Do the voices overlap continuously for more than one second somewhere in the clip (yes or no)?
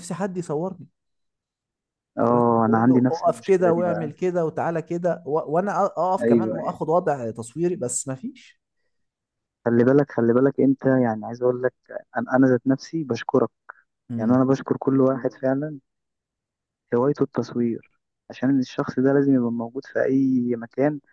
yes